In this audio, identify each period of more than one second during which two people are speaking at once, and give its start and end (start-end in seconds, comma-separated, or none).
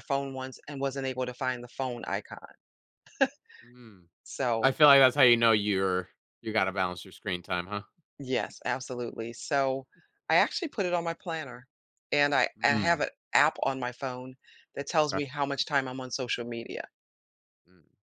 none